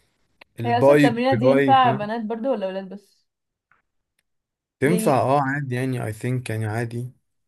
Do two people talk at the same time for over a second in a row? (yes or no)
yes